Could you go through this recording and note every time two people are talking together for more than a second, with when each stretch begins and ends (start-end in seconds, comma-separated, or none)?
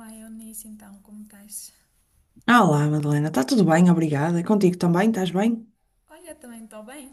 none